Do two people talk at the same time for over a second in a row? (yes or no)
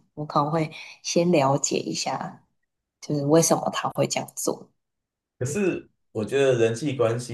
no